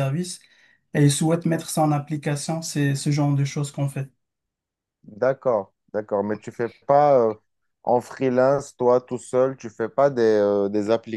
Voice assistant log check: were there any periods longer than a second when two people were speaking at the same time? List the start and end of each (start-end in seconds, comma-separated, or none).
none